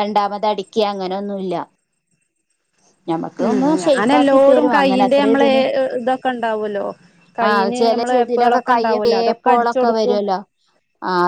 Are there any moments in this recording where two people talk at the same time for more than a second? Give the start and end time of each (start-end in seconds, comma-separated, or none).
3.5-5.5, 7.5-10.2